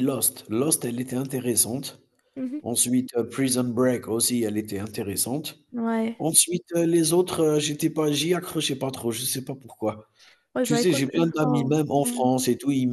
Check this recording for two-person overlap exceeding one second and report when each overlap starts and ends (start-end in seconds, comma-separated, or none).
10.6-12.3